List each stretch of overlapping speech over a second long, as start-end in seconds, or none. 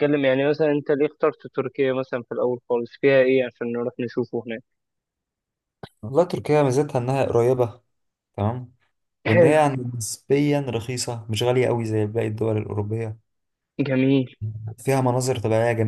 none